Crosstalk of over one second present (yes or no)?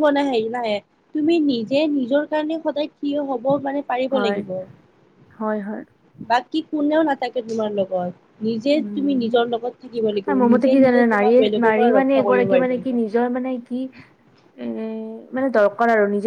yes